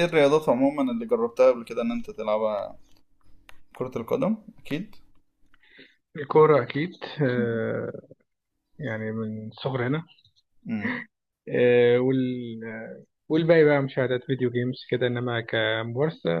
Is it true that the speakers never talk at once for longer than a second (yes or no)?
yes